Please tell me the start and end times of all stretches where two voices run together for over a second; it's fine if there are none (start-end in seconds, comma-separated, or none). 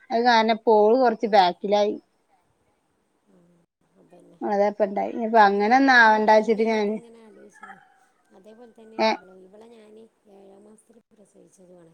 none